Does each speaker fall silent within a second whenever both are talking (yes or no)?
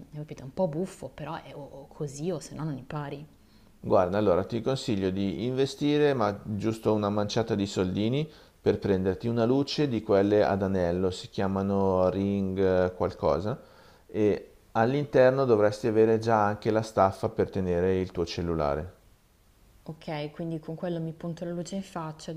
yes